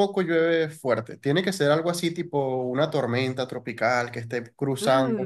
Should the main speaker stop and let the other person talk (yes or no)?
no